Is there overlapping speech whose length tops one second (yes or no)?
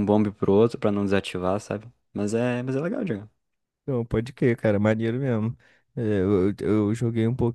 no